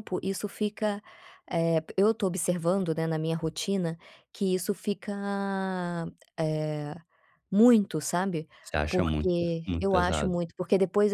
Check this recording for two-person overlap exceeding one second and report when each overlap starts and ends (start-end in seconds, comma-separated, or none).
8.9-10.4